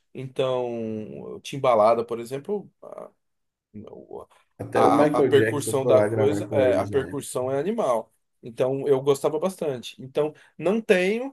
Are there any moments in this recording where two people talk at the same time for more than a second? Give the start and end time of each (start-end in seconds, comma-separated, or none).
4.7-7.3